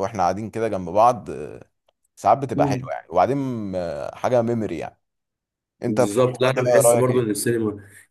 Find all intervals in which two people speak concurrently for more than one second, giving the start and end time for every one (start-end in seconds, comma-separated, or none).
5.9-7.3